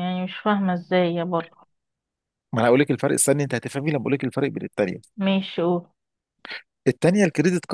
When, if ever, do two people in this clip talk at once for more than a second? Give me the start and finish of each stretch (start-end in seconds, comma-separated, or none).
none